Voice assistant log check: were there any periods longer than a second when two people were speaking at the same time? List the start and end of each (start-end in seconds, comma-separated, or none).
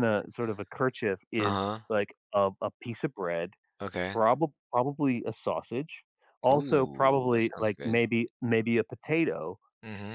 6.5-8.0